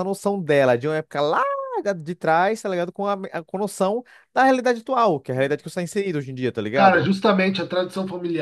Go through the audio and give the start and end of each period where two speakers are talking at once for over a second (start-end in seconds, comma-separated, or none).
none